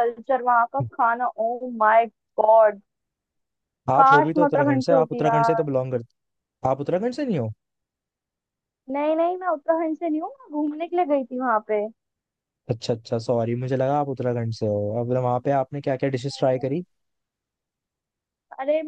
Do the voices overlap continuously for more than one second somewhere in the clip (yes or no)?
yes